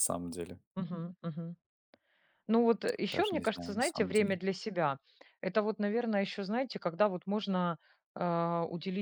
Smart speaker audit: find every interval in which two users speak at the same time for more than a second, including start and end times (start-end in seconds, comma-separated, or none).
3.1-4.4